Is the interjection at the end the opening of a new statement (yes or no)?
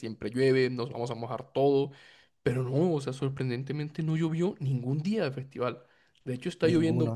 no